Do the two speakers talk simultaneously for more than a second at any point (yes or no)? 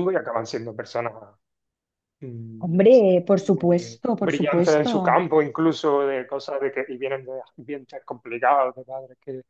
yes